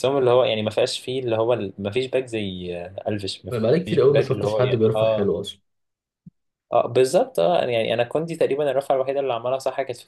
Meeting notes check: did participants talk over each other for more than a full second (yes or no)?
yes